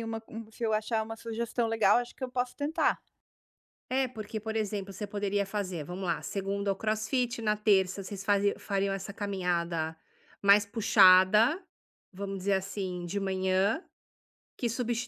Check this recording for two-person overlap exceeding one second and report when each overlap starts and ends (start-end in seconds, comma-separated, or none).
none